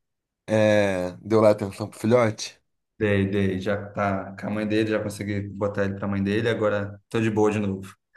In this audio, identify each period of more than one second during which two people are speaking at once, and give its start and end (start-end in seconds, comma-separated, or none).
none